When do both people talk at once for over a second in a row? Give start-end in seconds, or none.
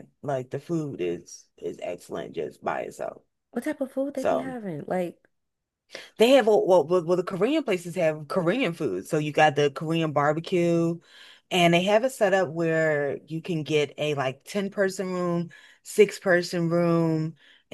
none